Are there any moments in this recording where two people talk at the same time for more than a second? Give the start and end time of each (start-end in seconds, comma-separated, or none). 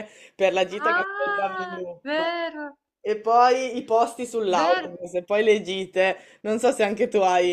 0.8-2.3